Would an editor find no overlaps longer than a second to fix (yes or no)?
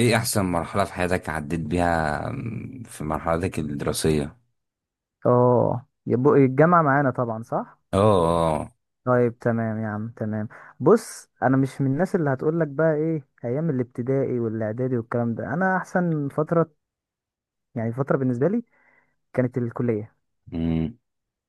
yes